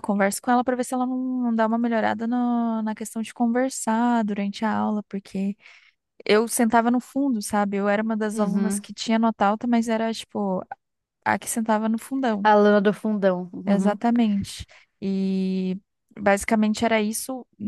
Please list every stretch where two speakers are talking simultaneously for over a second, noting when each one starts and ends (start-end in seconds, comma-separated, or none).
none